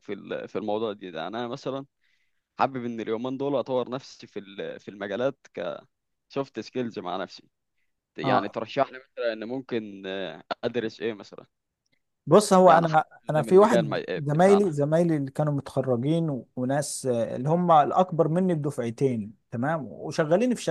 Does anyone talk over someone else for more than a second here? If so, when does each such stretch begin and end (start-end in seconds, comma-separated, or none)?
12.7-14.7